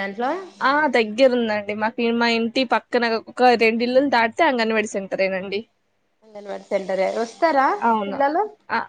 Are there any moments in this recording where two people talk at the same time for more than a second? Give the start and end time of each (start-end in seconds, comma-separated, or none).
none